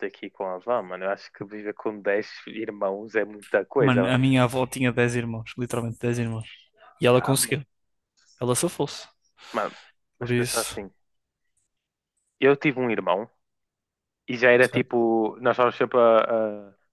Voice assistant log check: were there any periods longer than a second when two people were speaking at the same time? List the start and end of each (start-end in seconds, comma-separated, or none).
none